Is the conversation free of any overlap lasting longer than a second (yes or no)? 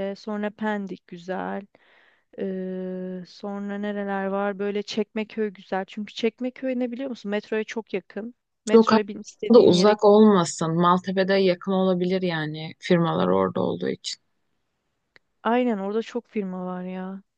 no